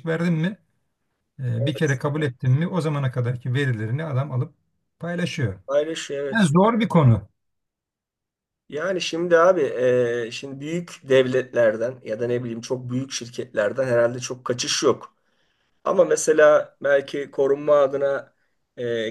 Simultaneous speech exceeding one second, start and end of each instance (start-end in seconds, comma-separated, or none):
none